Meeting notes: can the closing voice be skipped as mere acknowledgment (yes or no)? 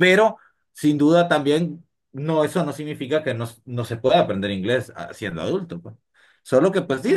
yes